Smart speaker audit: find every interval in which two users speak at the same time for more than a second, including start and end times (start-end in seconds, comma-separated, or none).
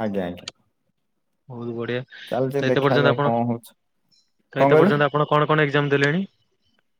2.3-3.7